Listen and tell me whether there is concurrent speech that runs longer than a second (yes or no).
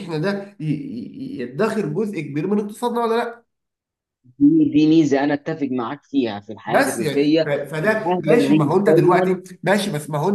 yes